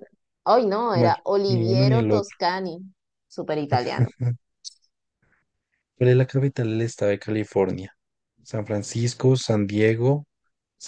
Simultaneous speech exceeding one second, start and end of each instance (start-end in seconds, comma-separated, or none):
0.9-2.4